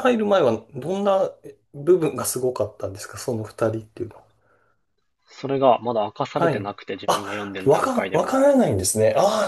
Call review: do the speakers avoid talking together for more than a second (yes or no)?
no